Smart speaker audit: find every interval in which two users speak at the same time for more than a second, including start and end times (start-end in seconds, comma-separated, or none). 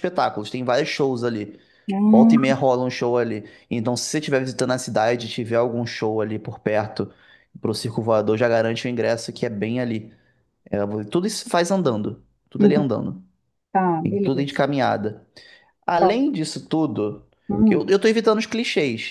none